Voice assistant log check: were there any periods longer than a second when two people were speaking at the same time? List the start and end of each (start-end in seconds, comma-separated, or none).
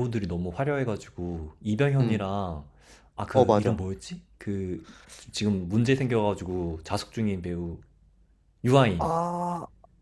none